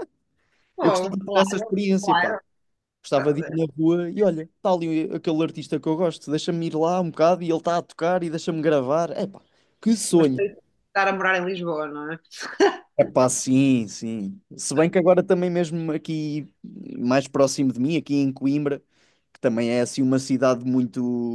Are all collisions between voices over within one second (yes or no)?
no